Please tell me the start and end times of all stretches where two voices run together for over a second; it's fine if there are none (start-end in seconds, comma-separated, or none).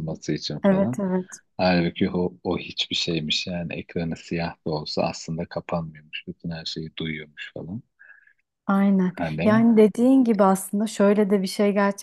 none